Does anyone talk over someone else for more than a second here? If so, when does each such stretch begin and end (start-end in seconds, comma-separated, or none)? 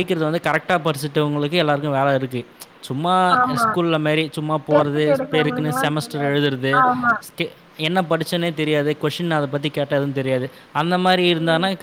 4.7-6.4